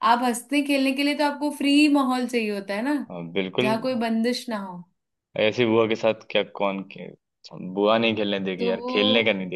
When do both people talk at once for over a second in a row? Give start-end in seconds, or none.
none